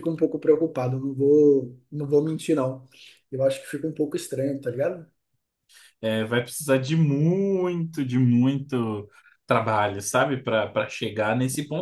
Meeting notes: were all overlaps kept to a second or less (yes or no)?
yes